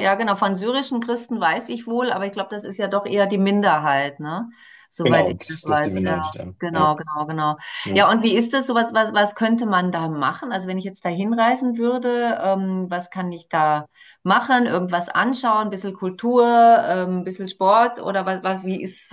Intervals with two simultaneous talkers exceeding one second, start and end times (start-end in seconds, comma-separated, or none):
5.0-6.9